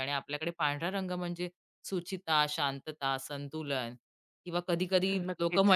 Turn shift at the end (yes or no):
no